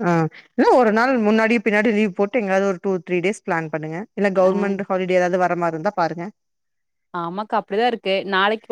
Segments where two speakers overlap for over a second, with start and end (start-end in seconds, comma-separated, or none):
none